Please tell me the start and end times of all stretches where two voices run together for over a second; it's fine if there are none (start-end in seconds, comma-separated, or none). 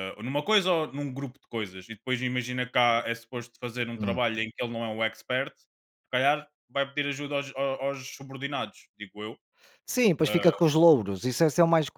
none